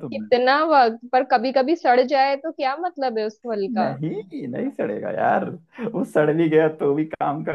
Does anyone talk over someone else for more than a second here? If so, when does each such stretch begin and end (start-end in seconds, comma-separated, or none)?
none